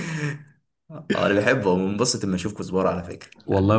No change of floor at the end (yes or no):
no